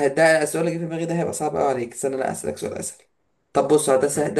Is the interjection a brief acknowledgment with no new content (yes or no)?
yes